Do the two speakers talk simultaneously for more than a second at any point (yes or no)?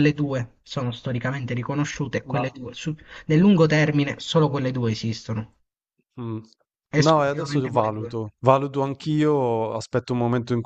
yes